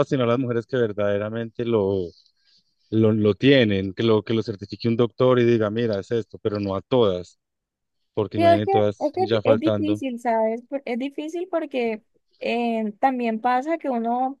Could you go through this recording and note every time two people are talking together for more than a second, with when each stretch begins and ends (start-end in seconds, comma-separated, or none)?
8.3-10.0